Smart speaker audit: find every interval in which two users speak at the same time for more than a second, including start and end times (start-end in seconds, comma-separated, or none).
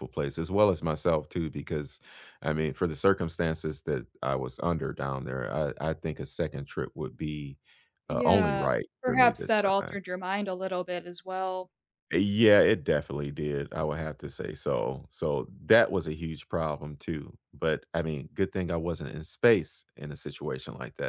8.1-9.9